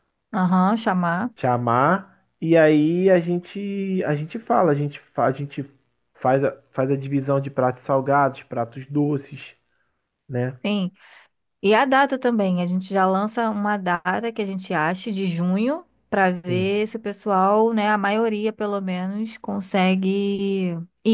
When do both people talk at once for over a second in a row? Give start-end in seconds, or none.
none